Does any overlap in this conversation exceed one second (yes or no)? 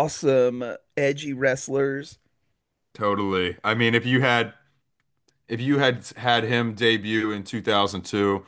no